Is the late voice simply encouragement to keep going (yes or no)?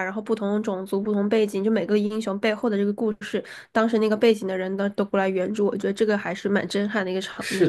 no